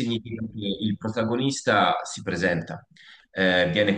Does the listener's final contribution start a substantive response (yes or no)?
yes